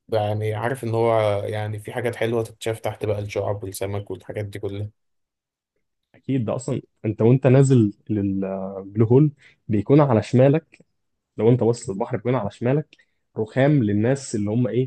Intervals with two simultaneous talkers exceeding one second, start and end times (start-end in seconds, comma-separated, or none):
none